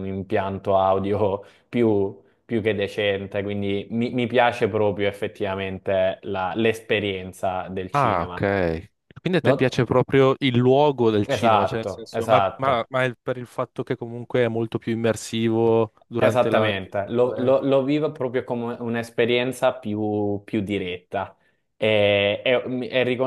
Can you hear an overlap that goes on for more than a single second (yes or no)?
yes